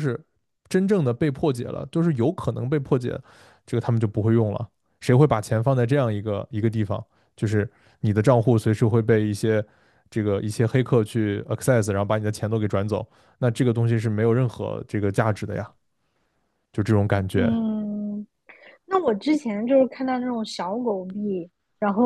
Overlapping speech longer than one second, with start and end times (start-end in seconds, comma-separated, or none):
none